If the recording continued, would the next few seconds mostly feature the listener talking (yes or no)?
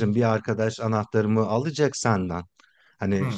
no